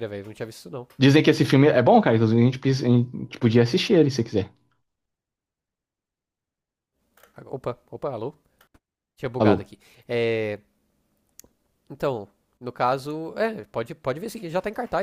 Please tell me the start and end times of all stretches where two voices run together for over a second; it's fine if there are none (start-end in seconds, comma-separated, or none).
none